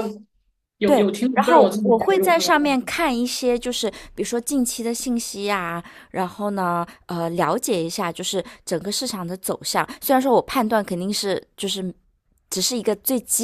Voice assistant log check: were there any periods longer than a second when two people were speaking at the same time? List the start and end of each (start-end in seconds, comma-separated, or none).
0.8-2.9